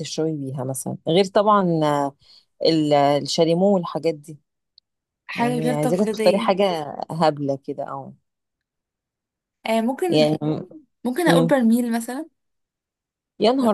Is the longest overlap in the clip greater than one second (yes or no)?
yes